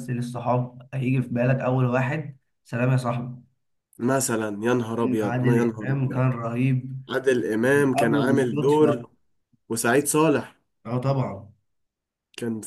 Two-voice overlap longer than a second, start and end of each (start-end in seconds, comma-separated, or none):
5.0-6.2, 7.6-9.0